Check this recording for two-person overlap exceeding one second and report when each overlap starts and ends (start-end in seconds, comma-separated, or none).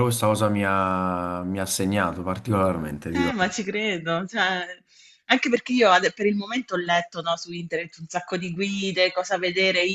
none